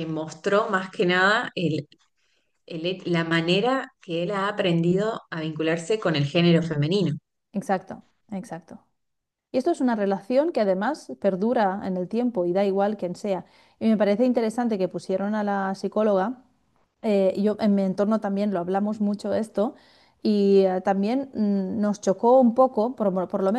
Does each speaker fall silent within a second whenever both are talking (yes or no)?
yes